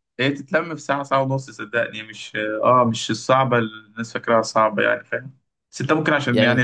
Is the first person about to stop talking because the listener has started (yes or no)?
no